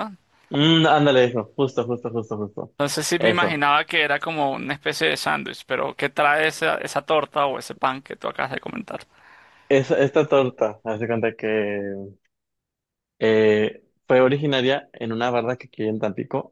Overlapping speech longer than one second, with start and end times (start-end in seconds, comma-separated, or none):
none